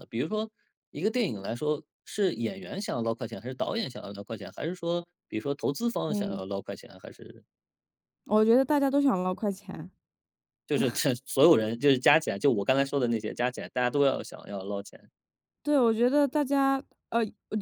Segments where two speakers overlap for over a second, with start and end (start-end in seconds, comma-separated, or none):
none